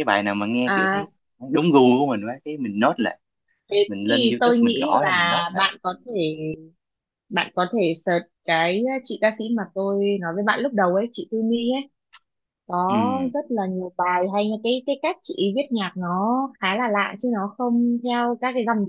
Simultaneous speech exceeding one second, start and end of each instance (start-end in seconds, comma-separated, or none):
3.9-5.7